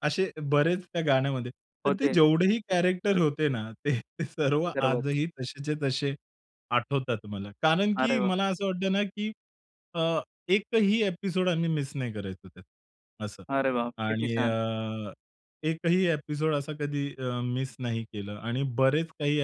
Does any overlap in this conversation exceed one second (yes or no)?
no